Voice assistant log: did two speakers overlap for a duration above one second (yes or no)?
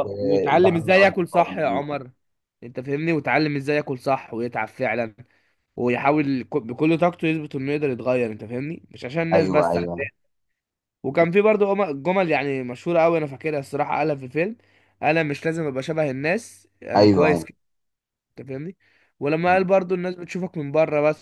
yes